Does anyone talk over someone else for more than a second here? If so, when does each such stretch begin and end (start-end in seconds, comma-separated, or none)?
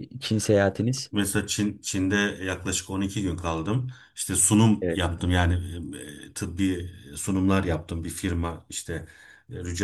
none